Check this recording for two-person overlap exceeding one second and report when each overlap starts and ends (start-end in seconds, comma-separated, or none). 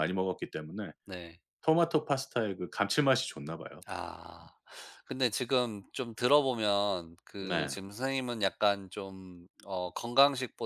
none